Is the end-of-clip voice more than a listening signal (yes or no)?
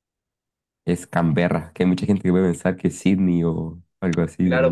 yes